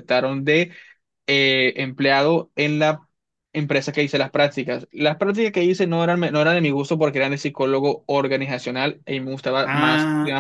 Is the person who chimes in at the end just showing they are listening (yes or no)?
no